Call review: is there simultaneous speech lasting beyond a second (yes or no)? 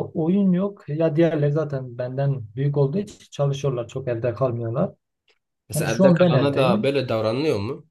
yes